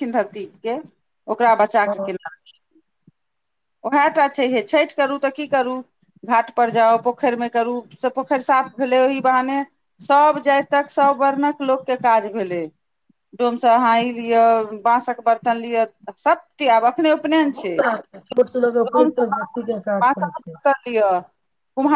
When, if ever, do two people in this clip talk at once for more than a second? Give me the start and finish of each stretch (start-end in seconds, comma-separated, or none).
none